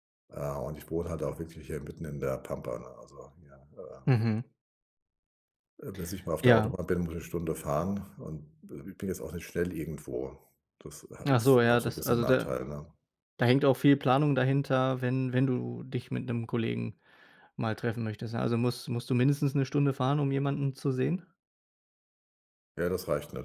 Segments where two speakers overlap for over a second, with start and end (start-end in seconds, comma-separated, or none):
11.2-12.5